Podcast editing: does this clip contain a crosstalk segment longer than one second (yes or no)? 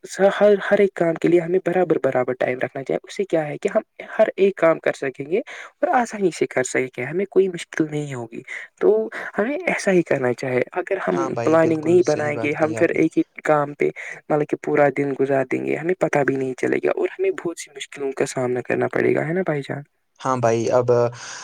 yes